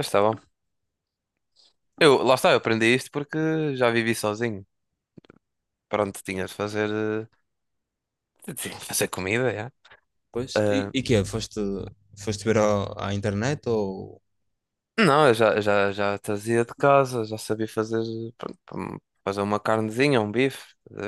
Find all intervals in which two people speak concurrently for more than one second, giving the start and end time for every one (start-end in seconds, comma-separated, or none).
none